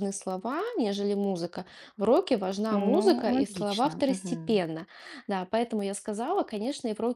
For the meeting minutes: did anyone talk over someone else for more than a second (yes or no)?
yes